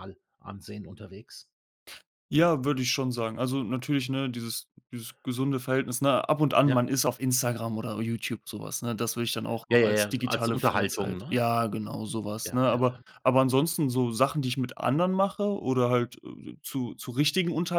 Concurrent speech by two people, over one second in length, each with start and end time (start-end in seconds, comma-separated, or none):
9.7-11.4